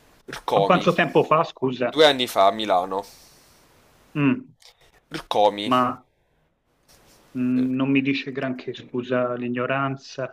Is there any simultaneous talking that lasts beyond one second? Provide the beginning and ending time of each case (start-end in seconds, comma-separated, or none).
none